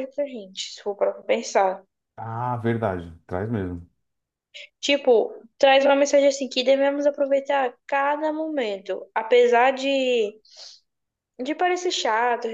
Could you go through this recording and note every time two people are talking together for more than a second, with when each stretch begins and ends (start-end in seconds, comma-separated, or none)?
none